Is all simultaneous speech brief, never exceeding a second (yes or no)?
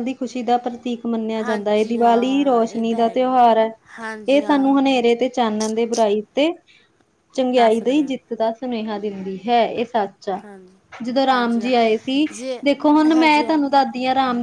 no